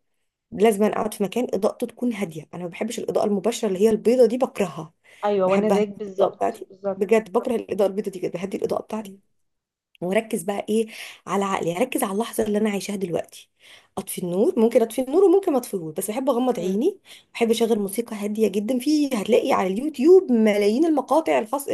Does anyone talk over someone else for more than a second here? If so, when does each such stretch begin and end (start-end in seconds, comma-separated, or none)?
5.4-7.2